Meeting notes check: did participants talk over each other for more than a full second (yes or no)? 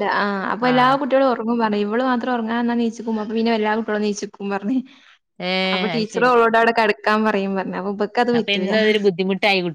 no